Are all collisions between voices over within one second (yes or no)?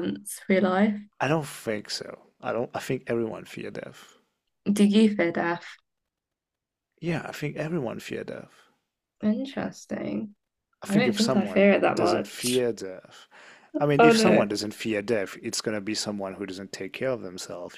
no